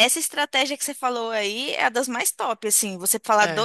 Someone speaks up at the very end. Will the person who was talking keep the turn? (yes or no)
yes